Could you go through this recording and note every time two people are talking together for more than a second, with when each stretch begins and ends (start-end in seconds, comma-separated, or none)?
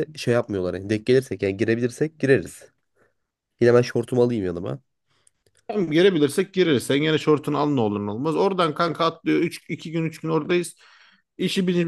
none